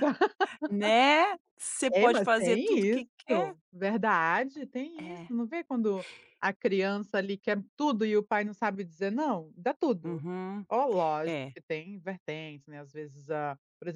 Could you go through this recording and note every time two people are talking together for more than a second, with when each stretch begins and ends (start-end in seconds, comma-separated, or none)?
1.9-3.5